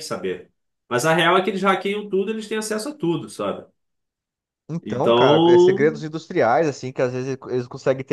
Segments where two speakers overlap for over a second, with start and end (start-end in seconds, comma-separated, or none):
4.8-6.1